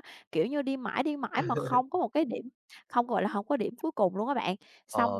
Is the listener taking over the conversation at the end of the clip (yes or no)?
yes